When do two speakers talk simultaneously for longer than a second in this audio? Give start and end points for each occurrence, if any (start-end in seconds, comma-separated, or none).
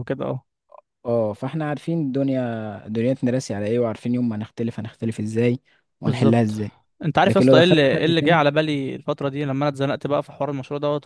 7.2-8.4